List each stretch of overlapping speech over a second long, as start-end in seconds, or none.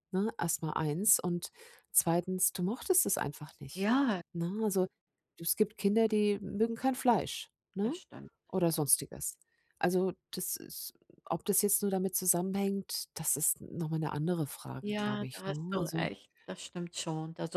14.8-16.1